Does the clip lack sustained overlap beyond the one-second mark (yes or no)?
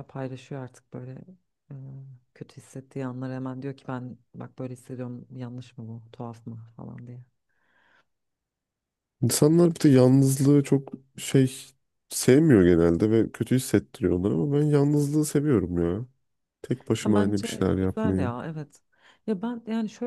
no